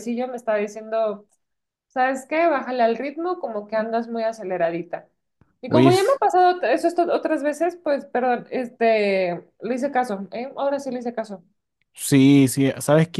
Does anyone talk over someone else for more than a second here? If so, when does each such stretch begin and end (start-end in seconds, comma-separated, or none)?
none